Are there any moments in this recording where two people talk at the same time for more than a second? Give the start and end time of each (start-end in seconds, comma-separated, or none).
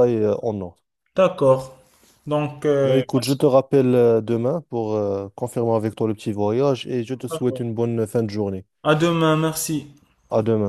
none